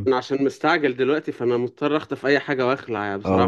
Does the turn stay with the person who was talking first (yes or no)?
no